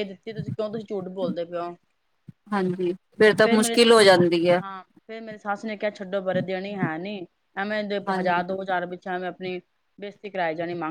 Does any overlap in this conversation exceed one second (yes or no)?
no